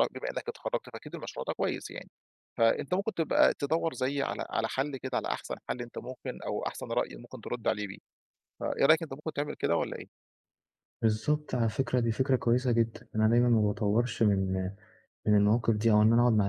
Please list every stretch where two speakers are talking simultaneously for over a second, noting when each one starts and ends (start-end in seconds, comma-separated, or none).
none